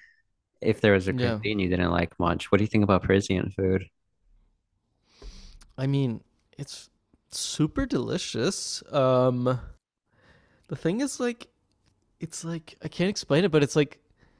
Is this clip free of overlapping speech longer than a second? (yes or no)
yes